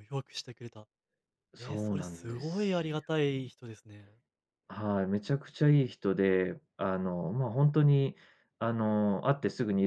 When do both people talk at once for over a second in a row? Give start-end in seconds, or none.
1.6-2.9